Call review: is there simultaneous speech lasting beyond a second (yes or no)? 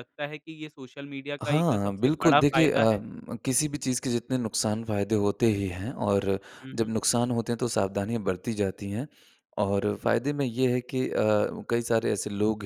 yes